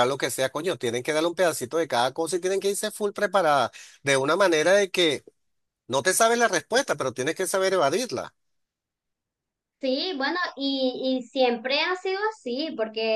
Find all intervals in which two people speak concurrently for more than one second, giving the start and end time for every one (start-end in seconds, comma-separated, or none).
none